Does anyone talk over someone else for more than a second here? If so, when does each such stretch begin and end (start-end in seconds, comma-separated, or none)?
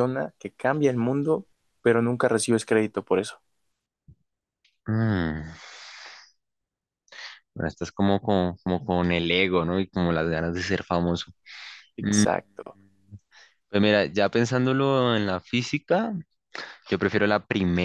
none